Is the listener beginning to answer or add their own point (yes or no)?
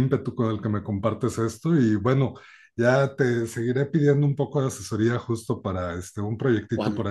yes